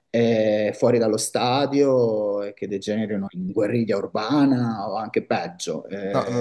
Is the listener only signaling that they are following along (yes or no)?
no